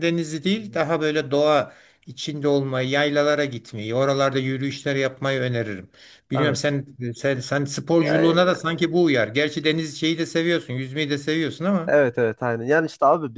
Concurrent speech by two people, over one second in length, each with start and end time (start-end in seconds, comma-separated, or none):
none